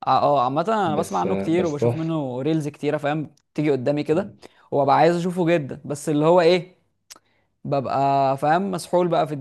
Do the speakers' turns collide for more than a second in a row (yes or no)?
yes